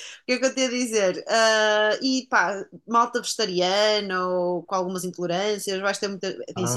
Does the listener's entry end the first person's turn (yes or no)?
yes